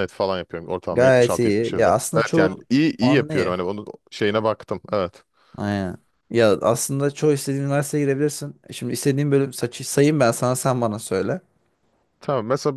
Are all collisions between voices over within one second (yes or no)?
no